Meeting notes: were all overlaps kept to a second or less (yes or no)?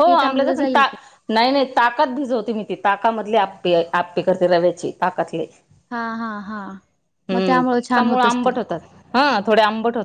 no